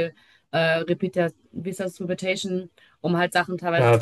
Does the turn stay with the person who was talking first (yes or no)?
yes